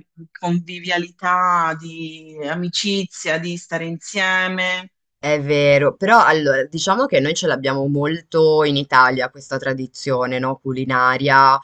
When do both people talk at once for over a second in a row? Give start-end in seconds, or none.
none